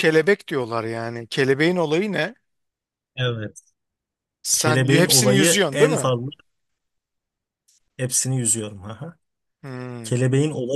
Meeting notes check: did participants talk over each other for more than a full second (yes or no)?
yes